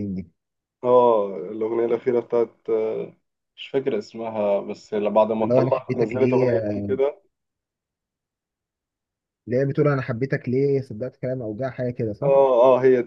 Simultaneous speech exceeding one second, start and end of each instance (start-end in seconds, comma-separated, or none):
5.4-6.9